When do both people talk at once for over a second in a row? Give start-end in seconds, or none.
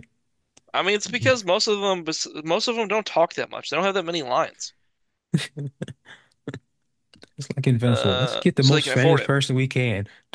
7.8-9.3